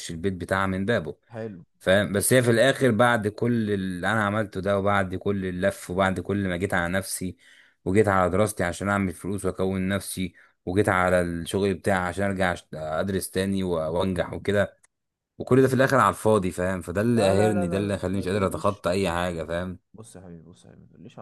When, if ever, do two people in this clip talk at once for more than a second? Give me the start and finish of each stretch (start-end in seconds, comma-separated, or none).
17.1-18.9